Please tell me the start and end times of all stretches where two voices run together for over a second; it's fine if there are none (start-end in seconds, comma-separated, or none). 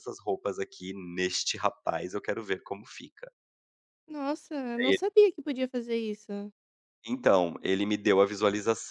none